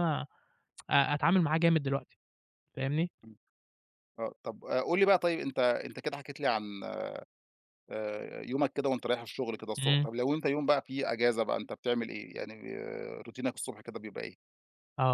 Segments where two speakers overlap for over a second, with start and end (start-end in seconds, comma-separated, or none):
none